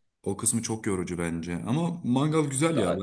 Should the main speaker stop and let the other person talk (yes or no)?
no